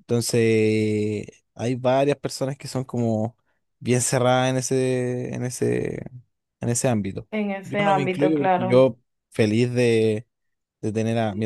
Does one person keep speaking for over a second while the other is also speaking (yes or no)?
yes